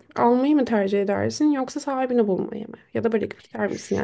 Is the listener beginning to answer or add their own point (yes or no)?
yes